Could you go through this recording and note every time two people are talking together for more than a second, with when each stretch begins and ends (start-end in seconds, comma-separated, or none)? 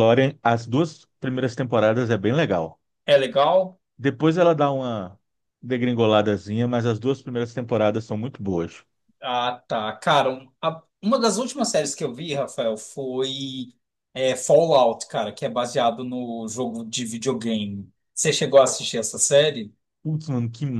none